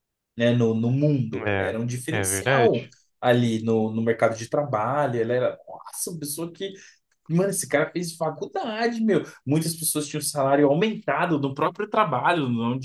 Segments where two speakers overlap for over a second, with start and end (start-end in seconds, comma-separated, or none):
1.3-2.9